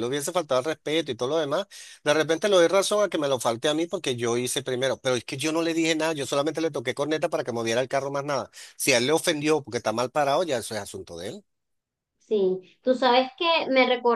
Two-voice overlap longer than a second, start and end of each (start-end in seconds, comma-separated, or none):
none